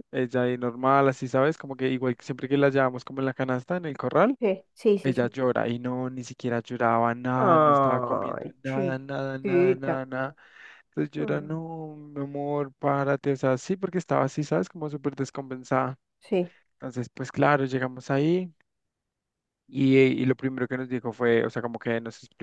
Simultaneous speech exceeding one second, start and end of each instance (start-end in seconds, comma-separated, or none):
7.3-10.0